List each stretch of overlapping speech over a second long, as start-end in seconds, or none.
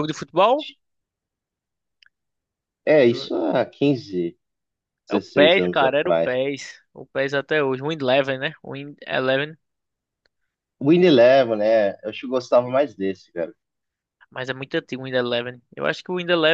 5.1-6.3